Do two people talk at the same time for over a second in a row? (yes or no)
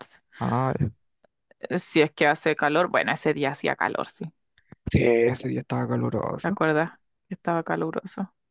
no